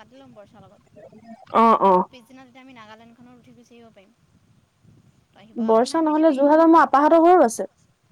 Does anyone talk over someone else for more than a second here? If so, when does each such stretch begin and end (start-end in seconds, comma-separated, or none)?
none